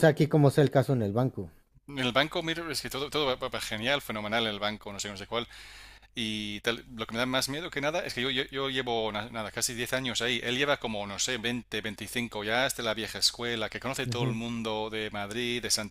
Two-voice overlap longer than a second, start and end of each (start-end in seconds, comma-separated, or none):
none